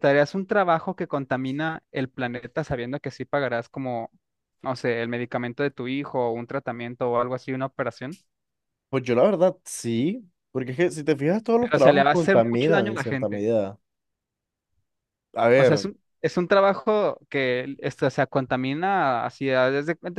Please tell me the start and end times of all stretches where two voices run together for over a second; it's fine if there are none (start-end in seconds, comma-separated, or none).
11.6-13.4